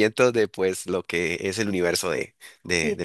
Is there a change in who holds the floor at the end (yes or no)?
yes